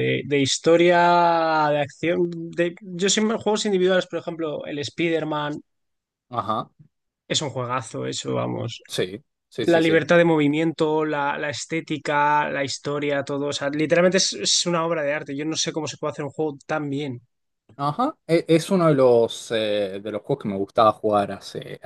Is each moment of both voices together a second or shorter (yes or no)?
yes